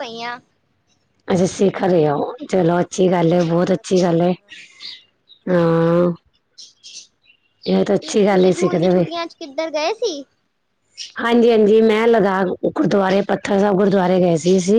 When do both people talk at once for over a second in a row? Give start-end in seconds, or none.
2.8-4.3